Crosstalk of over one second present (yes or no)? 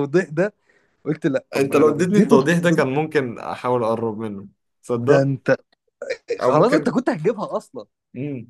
yes